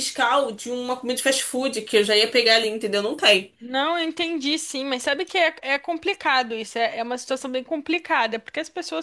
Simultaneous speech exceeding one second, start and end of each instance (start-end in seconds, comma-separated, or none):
none